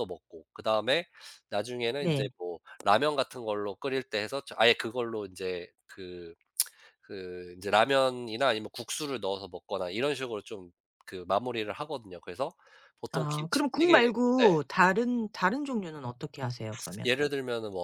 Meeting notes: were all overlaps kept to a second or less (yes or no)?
no